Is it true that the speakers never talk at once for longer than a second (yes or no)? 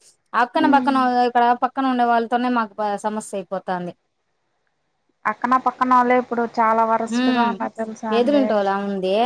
yes